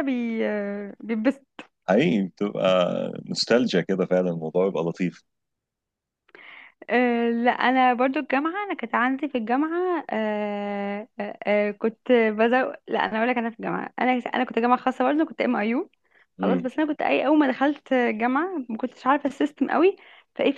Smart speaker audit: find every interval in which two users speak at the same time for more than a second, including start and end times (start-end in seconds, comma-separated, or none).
none